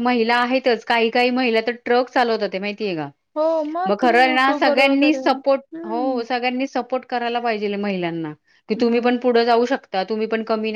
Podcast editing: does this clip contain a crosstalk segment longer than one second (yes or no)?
yes